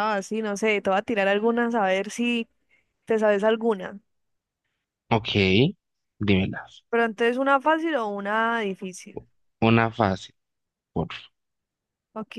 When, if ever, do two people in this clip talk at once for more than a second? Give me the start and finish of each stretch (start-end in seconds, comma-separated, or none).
none